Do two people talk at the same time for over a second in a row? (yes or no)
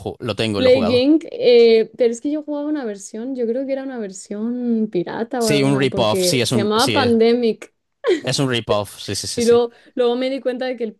yes